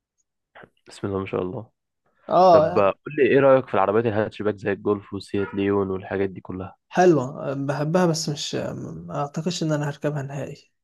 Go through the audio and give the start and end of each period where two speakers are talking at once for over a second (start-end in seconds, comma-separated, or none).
none